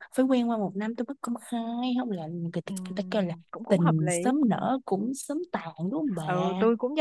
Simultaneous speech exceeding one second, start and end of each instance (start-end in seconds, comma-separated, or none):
2.6-4.4